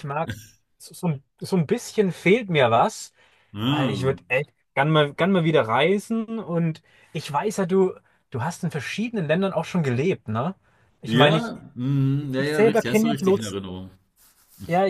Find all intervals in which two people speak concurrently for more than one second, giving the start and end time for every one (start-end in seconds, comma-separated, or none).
12.2-13.6